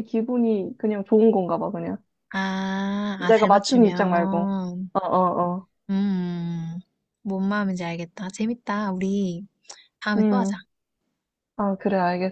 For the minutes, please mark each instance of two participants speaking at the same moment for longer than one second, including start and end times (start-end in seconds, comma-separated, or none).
3.2-4.5